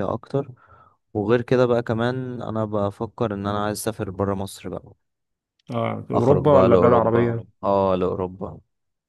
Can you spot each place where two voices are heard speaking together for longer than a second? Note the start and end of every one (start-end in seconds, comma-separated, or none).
6.1-7.6